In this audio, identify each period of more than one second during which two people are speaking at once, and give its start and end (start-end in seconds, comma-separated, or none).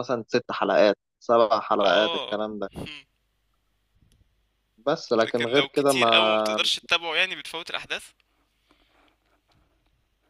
5.2-6.6